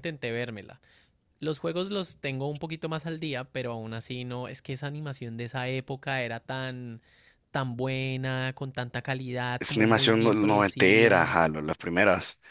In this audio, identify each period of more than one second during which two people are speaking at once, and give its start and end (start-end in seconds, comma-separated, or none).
9.6-11.4